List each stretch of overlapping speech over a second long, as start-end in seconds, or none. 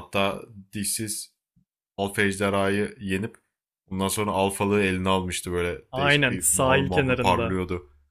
5.9-7.6